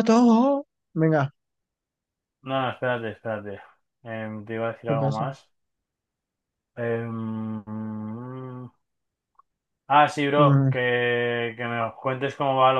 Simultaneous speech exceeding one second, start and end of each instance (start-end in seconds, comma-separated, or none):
none